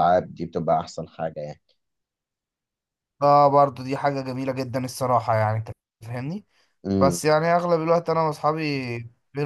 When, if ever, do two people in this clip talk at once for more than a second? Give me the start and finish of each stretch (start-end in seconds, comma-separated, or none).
none